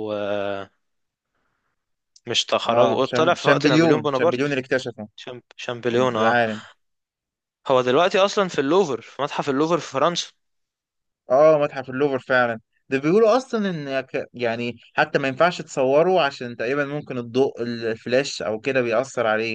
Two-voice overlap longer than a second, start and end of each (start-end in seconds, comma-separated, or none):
2.7-4.5